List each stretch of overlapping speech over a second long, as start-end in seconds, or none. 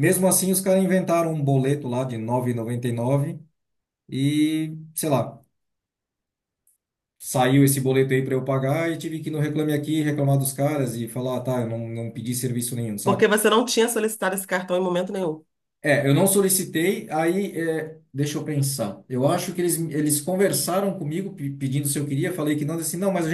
none